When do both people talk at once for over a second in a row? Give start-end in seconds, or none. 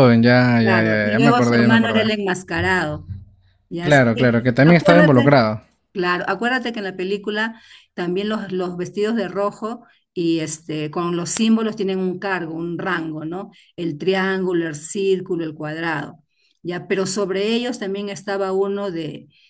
0.6-2.1, 3.8-5.4